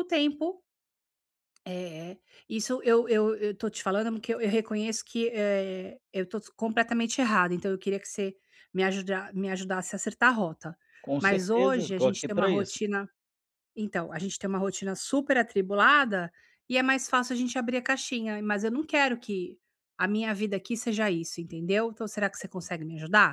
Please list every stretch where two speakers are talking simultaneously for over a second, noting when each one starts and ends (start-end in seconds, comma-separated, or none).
11.2-12.8